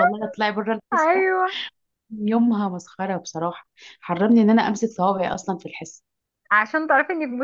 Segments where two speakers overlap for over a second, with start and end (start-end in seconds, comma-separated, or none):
none